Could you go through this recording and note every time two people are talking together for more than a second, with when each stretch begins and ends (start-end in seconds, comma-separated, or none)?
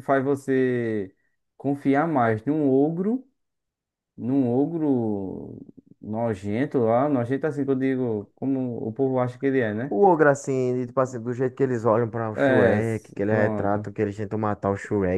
12.3-13.9